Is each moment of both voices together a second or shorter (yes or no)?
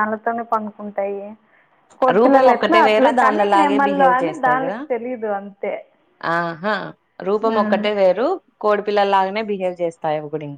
no